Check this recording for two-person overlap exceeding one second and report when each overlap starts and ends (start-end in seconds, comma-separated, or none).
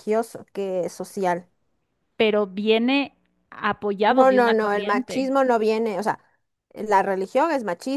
4.1-5.3